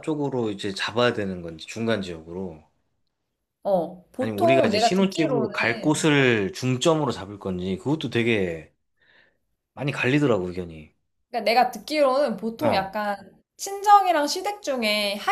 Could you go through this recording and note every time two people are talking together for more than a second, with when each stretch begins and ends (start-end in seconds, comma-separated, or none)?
4.2-6.1